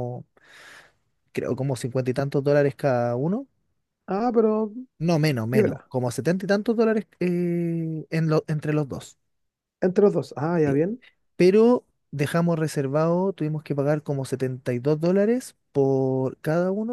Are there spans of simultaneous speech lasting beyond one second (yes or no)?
no